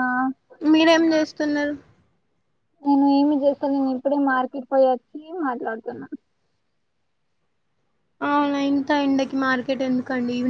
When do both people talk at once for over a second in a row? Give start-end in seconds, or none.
none